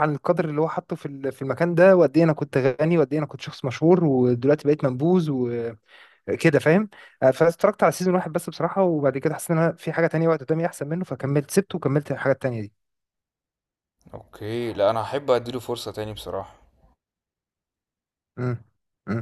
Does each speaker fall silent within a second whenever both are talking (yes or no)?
yes